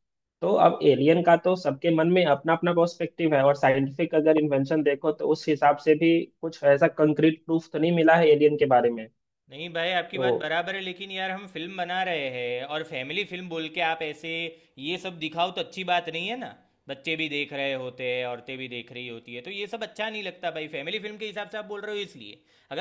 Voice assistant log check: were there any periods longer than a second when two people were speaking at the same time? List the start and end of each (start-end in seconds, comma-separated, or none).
none